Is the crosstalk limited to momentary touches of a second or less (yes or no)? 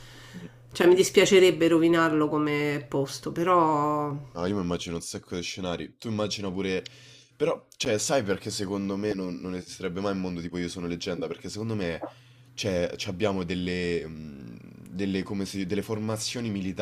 yes